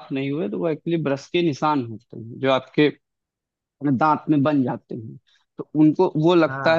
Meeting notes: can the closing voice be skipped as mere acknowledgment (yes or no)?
yes